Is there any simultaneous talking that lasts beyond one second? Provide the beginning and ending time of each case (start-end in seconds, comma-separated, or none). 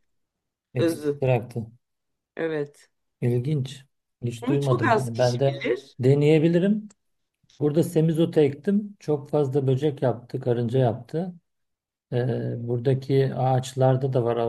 4.4-5.6